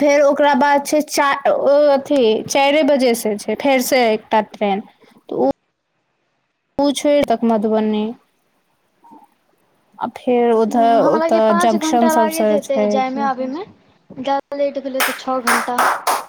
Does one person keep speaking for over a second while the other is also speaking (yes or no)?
yes